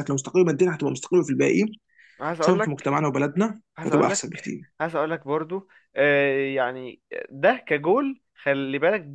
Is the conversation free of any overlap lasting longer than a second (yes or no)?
yes